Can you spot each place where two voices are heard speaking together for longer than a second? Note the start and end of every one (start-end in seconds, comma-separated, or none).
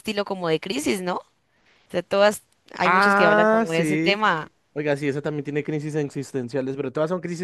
2.8-4.2